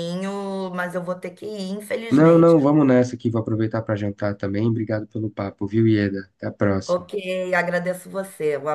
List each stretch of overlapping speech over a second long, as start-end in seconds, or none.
none